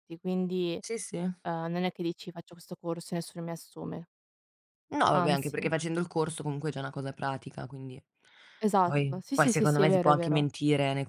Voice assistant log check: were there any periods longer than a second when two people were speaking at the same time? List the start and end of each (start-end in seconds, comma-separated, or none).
8.8-10.4